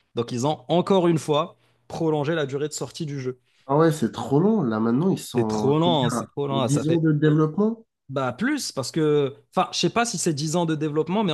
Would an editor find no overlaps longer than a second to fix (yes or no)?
no